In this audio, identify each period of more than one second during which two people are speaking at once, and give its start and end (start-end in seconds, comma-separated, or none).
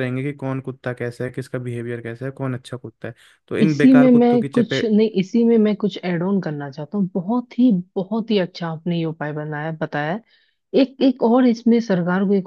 3.6-4.9